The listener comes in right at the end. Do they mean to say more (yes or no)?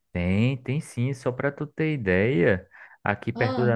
no